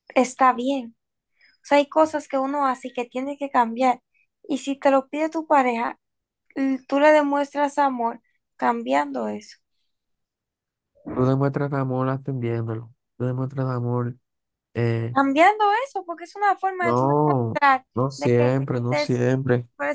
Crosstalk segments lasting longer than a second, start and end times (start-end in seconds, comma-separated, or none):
16.8-19.2